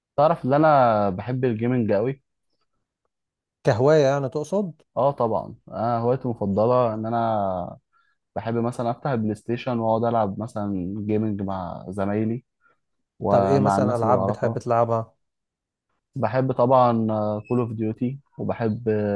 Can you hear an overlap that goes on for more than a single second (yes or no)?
yes